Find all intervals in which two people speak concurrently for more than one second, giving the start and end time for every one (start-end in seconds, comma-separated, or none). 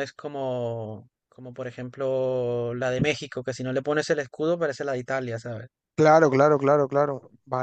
none